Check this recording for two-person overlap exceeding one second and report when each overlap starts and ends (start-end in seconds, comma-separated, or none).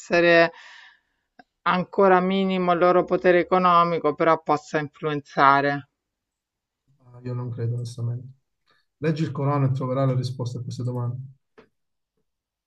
none